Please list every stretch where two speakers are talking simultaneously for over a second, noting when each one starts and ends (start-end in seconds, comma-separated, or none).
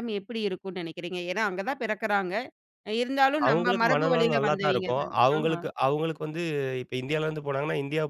3.5-5.6